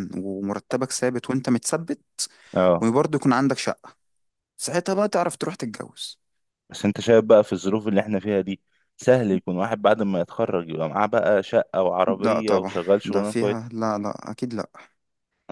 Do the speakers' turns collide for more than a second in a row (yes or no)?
yes